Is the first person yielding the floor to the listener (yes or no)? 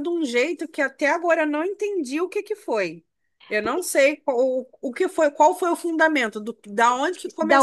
yes